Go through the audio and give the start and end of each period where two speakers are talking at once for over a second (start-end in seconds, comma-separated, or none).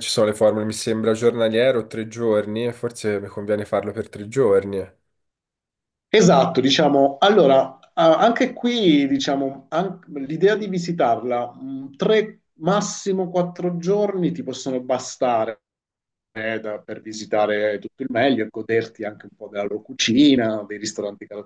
none